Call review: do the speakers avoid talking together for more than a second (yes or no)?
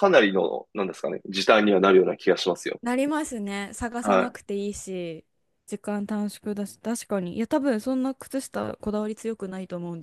yes